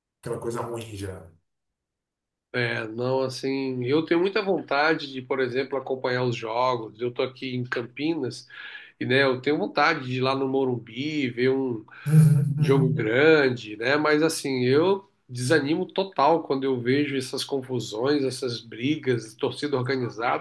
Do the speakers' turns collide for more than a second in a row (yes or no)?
no